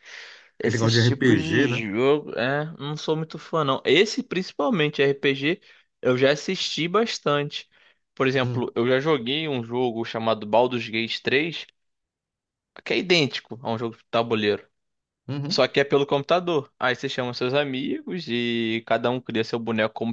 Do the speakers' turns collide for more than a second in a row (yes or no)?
yes